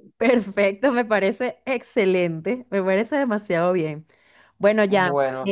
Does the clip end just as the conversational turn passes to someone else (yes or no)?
no